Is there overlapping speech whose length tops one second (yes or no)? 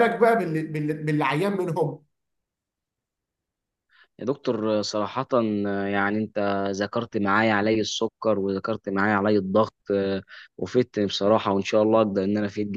no